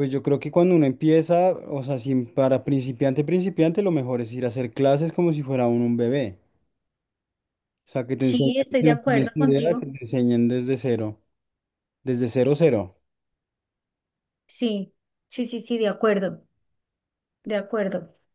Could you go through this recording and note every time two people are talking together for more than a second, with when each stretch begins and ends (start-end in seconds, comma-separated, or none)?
8.2-9.9